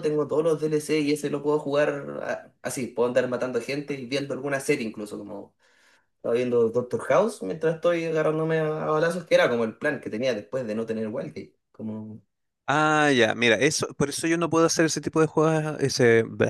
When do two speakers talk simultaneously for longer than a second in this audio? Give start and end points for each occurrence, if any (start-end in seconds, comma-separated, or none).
none